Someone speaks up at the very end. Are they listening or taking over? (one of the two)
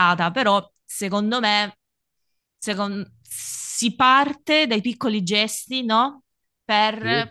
listening